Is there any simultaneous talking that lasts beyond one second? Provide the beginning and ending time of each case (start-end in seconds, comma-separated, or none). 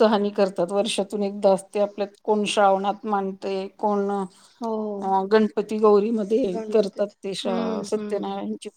6.5-8.2